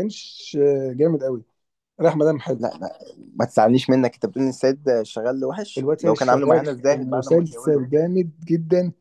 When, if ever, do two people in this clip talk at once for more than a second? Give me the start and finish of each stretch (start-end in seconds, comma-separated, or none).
5.8-7.9